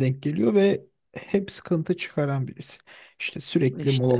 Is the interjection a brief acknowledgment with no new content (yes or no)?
yes